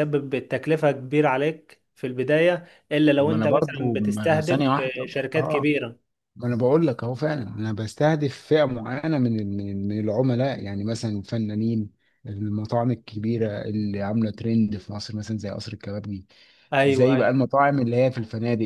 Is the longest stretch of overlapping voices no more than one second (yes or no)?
no